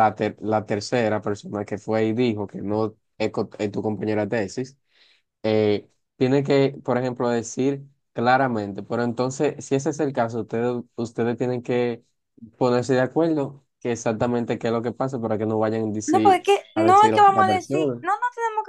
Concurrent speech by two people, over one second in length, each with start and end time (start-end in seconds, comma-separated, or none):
16.1-18.1